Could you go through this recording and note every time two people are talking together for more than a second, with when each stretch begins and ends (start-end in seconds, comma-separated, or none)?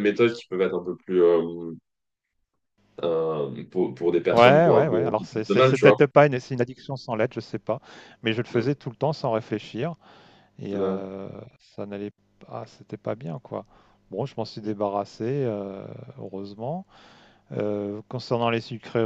4.3-6.0